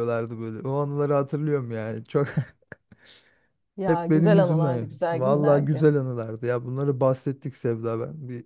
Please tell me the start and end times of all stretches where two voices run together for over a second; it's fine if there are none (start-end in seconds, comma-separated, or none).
3.9-5.8